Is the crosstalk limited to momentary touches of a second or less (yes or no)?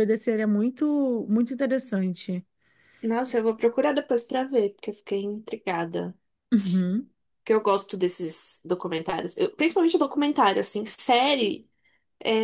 yes